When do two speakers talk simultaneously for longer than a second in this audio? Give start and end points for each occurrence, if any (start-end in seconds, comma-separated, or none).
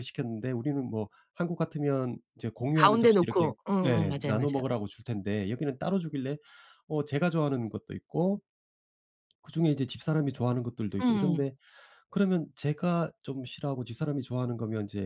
2.7-4.6